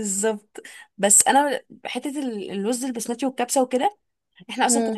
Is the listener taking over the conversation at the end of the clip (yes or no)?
no